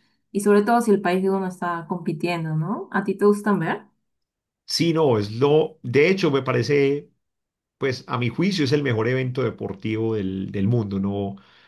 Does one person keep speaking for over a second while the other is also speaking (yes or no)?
no